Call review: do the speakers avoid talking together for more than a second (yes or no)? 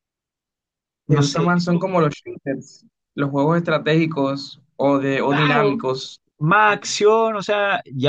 yes